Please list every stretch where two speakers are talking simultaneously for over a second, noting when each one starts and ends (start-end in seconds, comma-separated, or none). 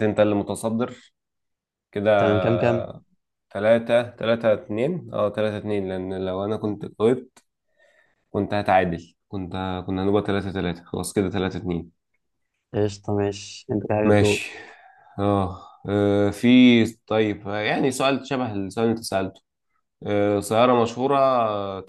none